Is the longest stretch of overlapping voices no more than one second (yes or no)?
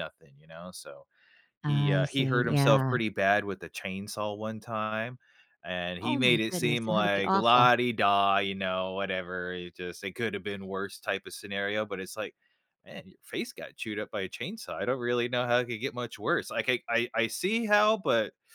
no